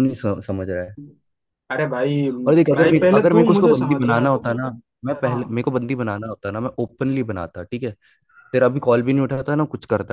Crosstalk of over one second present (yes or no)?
yes